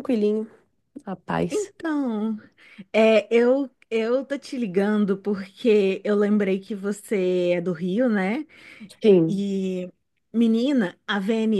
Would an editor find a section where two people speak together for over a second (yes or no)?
no